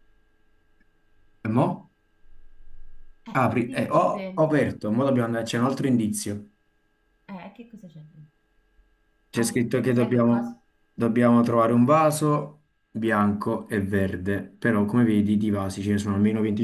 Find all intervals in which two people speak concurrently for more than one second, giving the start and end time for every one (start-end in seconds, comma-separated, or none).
3.4-4.8, 9.3-10.6